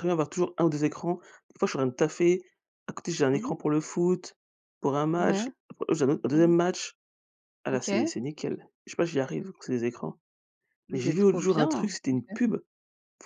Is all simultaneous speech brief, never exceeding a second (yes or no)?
no